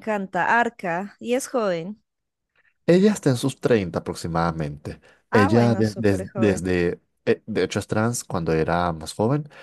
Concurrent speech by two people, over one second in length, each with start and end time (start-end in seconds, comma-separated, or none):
5.3-6.7